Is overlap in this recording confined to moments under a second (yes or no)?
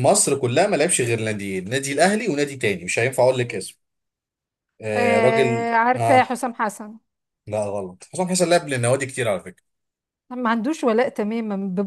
no